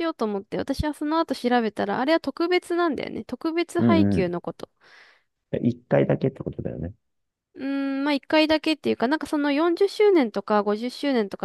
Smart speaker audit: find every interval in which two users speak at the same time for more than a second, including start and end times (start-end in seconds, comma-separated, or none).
none